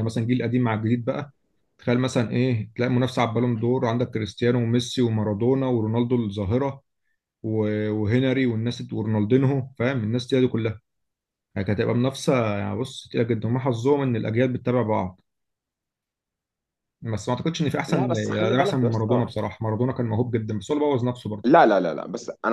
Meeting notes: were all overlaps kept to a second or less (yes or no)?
no